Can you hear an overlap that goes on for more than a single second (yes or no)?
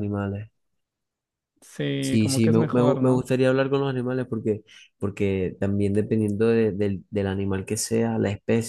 yes